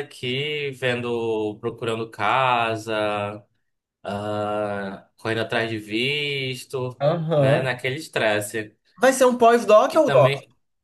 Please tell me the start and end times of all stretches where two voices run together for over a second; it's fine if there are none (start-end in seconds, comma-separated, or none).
none